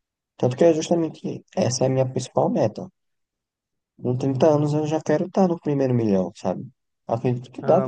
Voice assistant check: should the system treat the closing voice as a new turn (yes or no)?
yes